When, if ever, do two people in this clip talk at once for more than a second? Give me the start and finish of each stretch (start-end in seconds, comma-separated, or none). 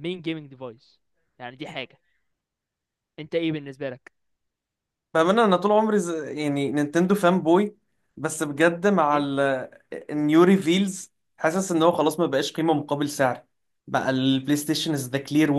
none